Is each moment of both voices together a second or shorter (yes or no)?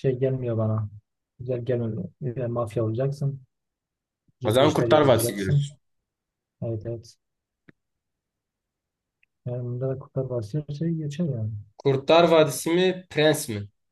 no